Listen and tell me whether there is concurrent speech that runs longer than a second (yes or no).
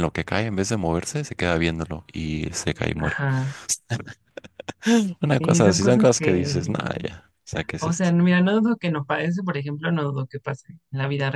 yes